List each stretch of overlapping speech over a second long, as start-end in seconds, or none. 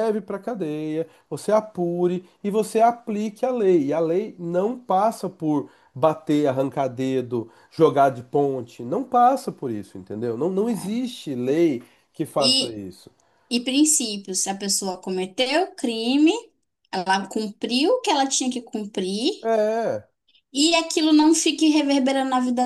none